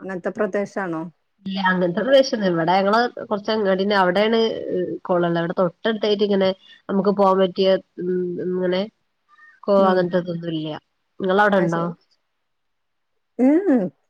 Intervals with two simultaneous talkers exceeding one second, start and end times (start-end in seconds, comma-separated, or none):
none